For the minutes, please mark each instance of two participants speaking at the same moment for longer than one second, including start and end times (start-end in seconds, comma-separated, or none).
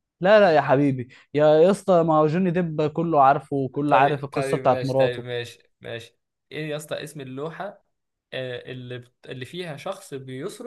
3.9-5.2